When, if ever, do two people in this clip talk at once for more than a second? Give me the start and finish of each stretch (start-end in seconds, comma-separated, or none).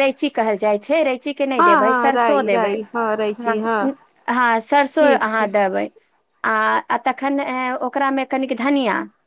1.6-3.9